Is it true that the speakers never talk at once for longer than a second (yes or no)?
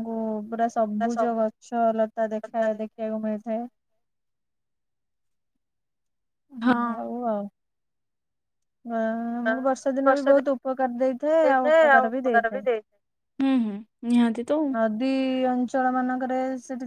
yes